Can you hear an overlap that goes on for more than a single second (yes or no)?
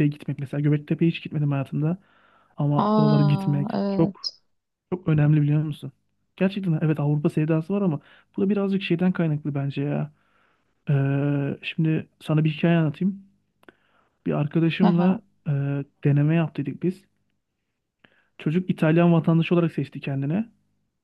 yes